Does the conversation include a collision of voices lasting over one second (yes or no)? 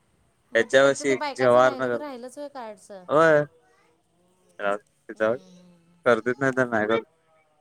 yes